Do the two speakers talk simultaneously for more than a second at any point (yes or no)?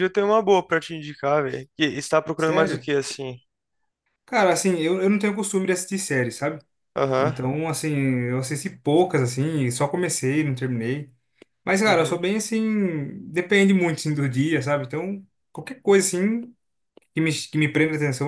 no